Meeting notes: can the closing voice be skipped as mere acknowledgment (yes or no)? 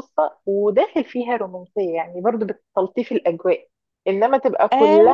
yes